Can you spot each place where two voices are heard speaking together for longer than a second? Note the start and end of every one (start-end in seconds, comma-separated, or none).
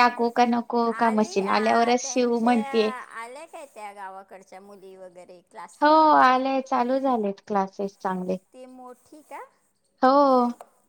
0.9-2.6